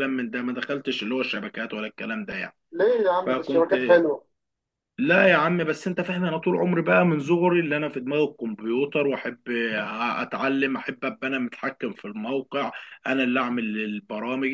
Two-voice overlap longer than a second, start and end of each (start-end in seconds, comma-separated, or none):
none